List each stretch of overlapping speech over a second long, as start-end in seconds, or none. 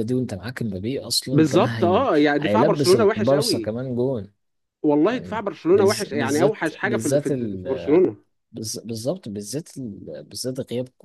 1.3-3.7, 5.0-7.3